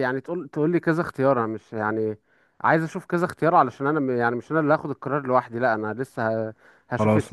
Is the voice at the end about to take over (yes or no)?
no